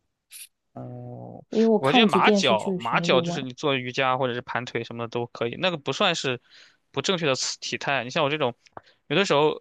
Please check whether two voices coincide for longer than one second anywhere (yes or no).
yes